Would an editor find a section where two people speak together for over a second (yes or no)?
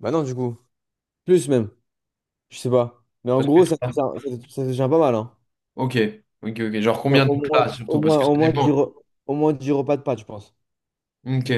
yes